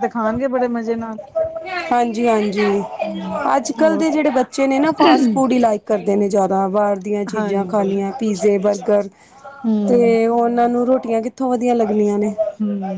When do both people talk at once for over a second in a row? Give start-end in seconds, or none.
none